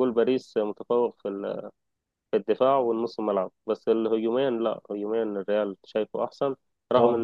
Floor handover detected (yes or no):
no